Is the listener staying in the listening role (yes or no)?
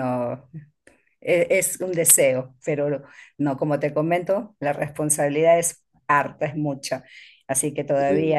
yes